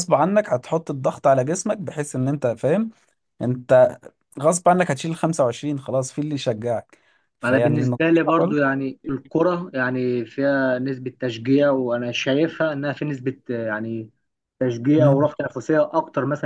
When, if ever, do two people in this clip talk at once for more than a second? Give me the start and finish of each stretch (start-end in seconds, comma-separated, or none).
7.4-8.7